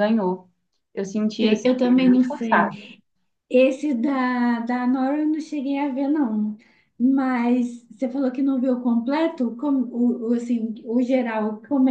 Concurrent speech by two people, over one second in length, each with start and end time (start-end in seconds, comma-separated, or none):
1.4-2.8